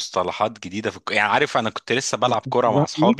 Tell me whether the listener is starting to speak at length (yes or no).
yes